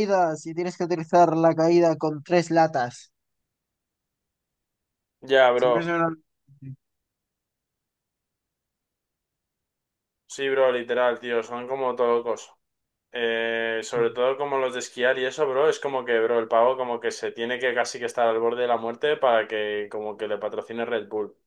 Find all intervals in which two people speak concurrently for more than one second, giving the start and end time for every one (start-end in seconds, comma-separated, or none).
none